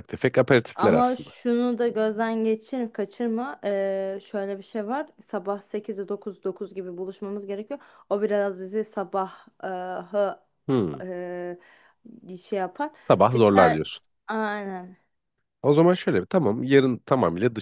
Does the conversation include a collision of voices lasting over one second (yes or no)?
no